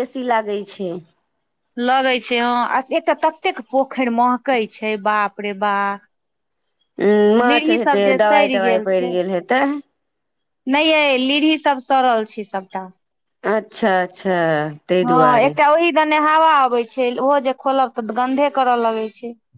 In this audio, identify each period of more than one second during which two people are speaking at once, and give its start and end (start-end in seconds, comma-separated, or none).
7.4-9.1